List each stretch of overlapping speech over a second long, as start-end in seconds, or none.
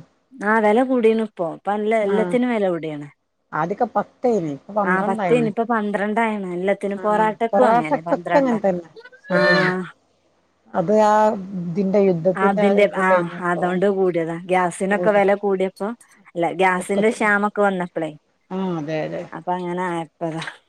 7.0-8.6